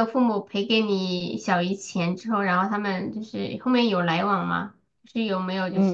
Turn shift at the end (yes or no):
yes